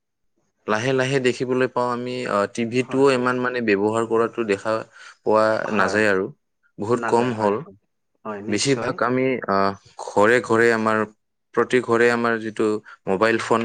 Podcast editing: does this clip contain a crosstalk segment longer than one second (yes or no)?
no